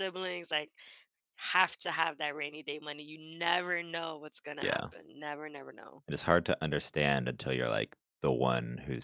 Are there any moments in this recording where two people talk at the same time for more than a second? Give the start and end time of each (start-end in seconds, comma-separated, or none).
none